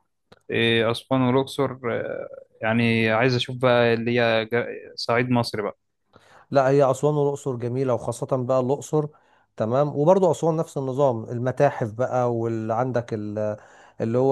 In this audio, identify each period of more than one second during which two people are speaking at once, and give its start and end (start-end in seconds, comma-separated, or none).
none